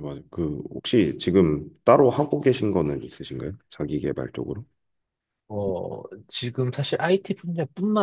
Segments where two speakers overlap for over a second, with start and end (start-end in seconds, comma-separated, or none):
none